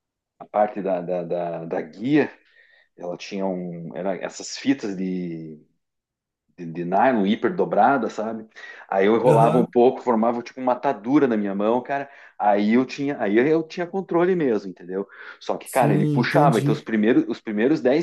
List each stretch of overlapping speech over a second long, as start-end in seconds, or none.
15.6-16.9